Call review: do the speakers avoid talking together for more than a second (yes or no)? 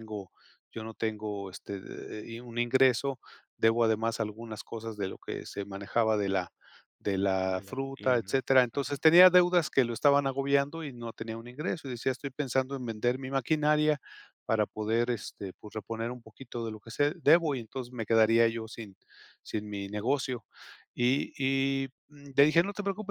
no